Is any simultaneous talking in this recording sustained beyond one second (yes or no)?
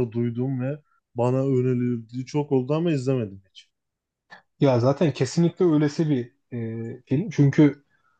no